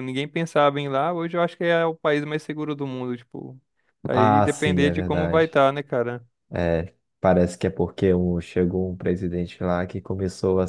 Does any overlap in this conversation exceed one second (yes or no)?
yes